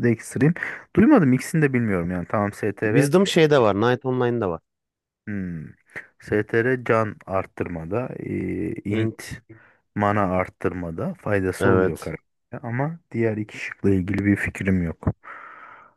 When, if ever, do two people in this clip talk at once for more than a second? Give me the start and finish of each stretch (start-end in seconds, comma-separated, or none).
none